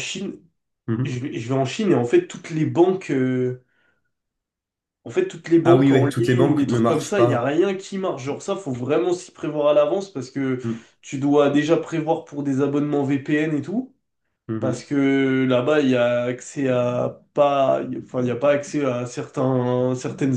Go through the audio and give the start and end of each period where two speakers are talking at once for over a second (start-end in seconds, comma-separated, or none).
5.6-7.5